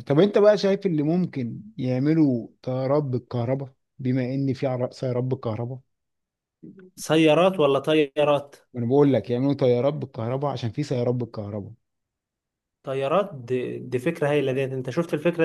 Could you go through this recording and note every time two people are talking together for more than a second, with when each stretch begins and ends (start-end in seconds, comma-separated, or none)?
none